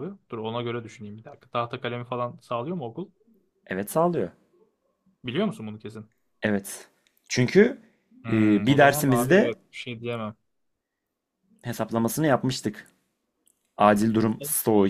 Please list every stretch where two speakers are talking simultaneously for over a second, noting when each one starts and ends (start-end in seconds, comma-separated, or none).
8.3-9.5